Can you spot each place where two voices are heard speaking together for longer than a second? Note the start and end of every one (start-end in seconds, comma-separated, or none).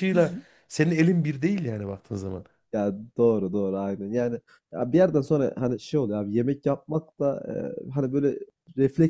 none